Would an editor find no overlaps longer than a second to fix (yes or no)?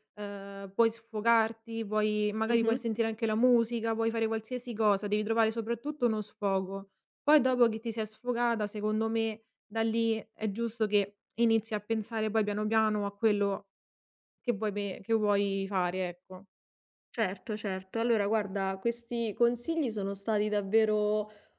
yes